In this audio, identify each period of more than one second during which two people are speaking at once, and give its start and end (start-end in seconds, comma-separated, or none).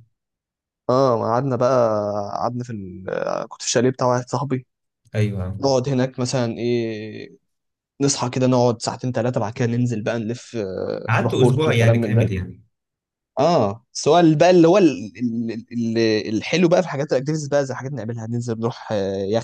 11.1-12.3